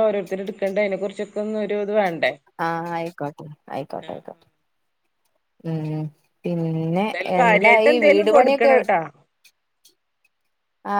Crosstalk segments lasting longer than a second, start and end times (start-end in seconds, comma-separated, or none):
7.2-8.7